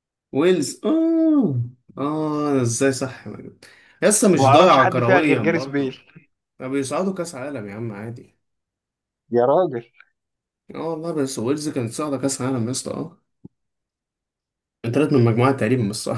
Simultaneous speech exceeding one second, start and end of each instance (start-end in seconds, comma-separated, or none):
4.3-6.0